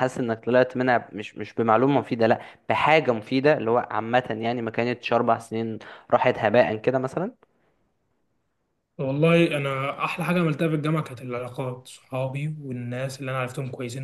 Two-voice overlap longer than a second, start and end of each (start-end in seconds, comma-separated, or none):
none